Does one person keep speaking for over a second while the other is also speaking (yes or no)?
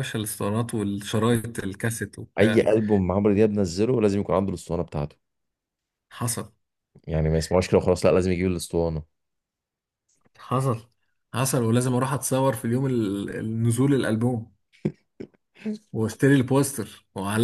no